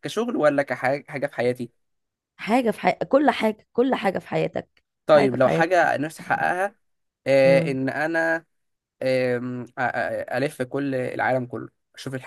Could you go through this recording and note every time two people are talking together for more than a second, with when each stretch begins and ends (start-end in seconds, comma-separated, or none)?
5.1-6.5